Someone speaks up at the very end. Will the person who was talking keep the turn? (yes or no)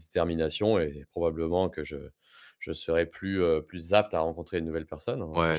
no